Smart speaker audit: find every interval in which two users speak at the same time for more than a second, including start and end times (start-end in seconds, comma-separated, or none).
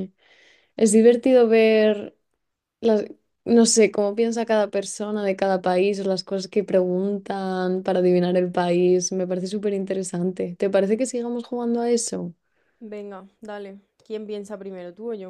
none